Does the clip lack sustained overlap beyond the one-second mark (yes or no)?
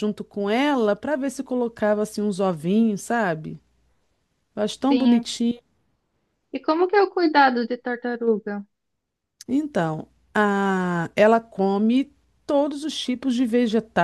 yes